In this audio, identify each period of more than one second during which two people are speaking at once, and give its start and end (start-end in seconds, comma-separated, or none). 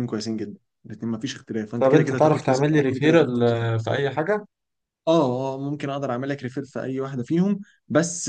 1.8-3.4